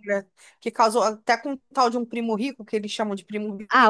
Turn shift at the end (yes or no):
yes